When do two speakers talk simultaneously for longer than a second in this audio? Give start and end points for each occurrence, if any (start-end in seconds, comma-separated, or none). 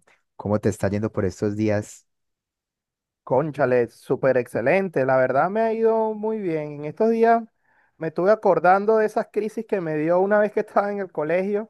none